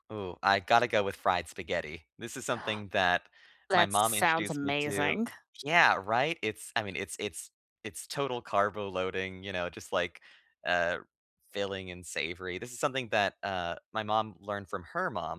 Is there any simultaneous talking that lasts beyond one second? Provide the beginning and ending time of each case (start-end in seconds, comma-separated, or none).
3.7-5.2